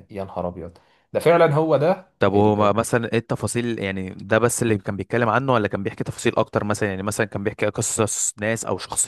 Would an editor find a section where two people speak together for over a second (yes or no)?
no